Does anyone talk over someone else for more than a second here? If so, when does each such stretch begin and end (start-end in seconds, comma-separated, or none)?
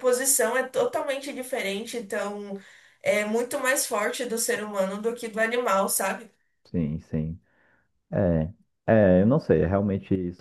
none